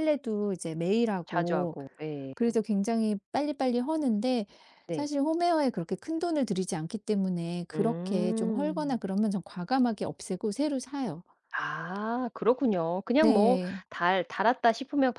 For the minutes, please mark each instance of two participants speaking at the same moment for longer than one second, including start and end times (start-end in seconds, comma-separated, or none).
7.7-9.0